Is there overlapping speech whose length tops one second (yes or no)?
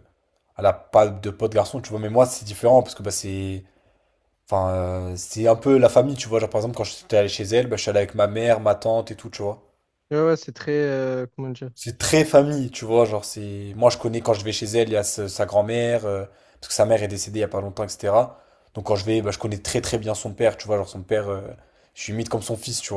no